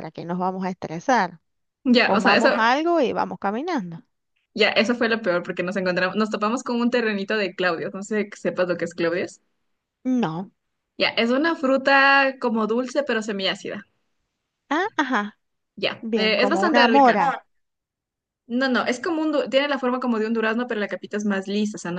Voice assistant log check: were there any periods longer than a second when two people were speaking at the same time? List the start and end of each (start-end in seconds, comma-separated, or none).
16.0-17.4